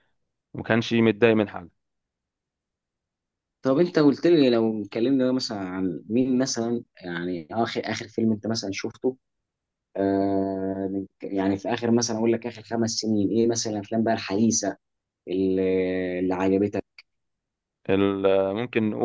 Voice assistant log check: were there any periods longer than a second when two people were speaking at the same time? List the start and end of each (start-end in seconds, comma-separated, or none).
none